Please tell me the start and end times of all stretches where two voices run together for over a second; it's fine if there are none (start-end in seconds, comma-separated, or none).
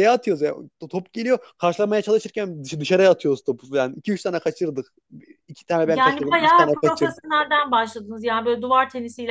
5.8-7.1